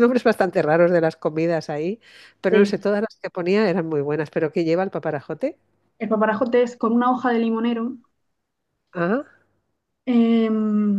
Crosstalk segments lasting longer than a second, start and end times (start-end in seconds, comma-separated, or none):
none